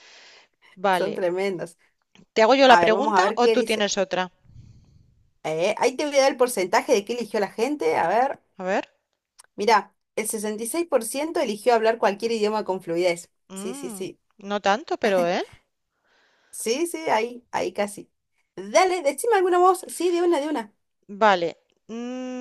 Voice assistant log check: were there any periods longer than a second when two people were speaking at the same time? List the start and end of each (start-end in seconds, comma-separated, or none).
2.6-3.9